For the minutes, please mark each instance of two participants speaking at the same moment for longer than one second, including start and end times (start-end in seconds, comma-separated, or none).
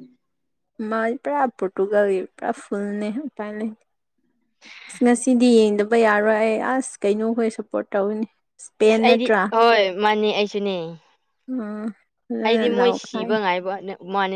none